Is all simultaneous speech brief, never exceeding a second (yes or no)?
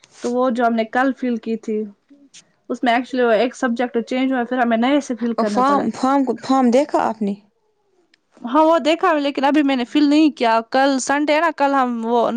yes